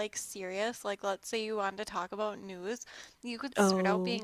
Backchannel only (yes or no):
yes